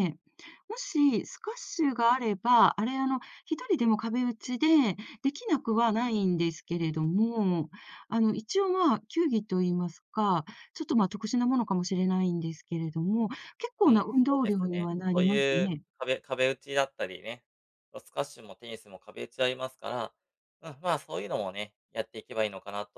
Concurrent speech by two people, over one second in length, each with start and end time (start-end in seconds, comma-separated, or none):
13.8-15.8